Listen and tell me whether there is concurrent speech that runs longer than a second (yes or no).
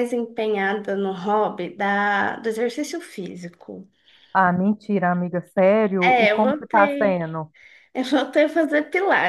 yes